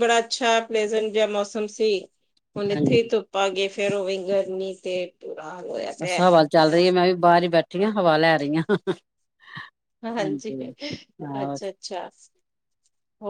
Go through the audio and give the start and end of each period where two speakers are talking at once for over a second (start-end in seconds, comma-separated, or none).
none